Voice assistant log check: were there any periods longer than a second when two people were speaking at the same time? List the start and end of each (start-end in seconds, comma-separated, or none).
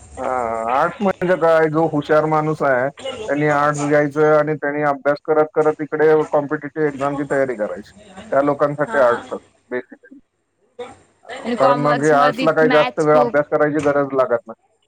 11.6-13.4